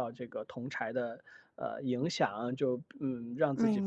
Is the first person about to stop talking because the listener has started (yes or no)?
no